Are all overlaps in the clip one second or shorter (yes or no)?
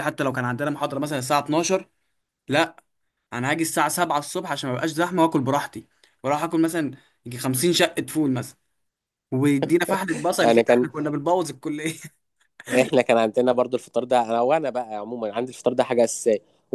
yes